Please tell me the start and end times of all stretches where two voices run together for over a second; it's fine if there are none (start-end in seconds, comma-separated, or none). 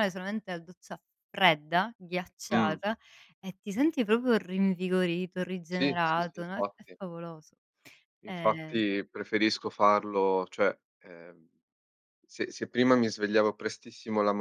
5.7-7.0